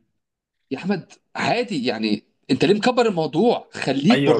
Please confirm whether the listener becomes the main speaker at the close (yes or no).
yes